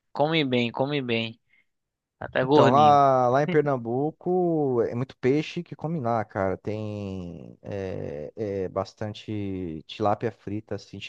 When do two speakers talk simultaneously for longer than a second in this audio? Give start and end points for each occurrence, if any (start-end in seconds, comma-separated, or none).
none